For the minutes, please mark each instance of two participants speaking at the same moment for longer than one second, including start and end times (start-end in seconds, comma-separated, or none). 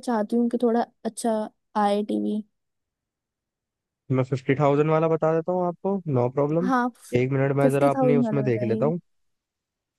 7.6-8.9